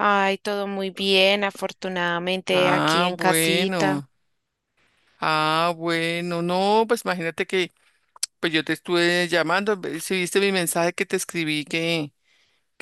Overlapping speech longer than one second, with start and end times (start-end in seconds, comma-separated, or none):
2.5-4.0